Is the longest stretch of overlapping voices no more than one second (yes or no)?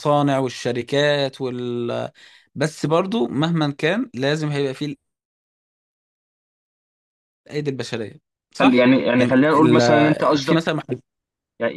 no